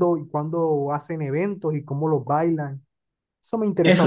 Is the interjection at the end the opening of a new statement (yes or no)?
yes